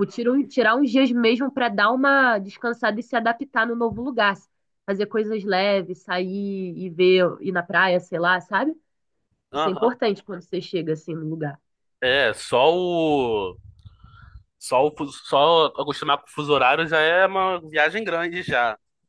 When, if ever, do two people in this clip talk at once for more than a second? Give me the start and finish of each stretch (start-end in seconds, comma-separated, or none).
none